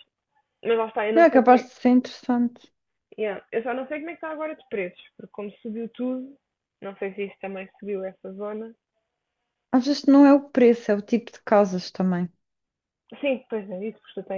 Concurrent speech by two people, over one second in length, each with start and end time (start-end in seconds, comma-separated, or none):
none